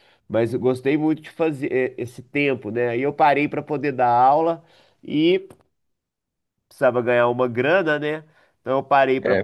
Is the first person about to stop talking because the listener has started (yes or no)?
no